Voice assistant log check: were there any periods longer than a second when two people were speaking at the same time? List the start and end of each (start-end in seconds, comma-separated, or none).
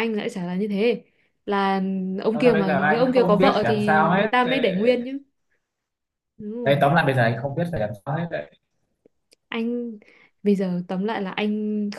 2.3-4.3